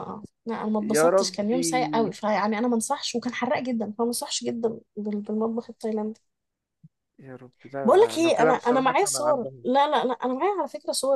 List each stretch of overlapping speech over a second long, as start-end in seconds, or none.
0.8-2.2, 7.8-9.7